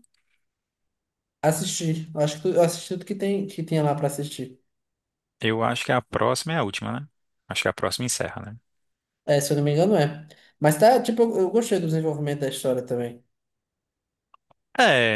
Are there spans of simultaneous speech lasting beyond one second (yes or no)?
no